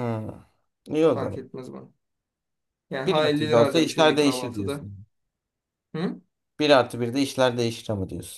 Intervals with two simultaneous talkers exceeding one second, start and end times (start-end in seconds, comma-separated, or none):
3.1-4.9